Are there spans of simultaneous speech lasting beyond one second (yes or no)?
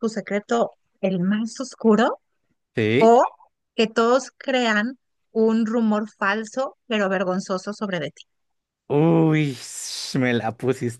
no